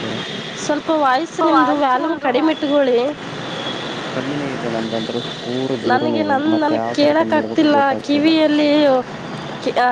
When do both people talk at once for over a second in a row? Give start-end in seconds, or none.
5.9-8.3